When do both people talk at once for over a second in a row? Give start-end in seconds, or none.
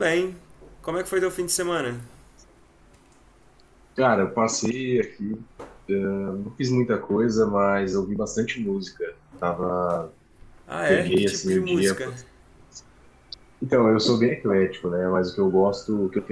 10.8-12.1